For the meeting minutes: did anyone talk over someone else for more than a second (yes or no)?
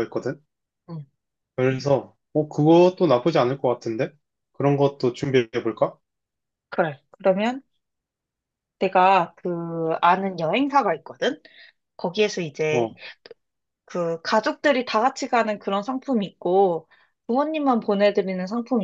no